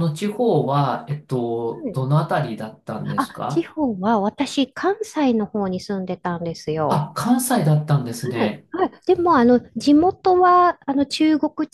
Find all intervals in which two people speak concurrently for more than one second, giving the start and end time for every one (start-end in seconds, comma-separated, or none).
none